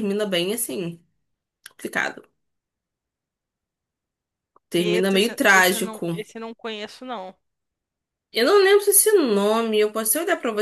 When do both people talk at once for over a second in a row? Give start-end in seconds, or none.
4.8-6.2